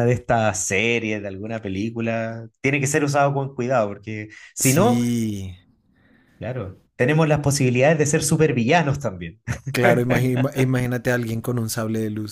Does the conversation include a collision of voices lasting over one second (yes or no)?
no